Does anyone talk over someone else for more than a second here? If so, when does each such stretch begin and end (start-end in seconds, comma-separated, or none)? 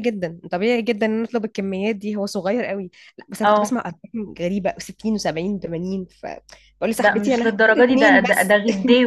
7.0-8.6